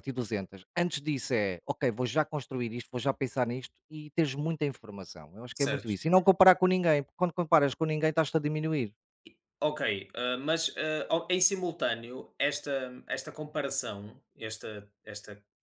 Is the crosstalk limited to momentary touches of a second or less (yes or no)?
yes